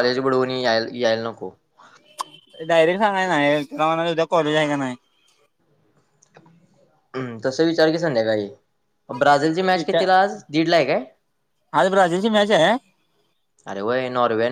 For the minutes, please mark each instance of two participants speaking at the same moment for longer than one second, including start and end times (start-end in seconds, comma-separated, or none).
none